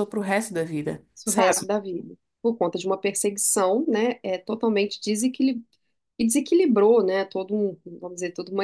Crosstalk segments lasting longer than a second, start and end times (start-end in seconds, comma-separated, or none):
none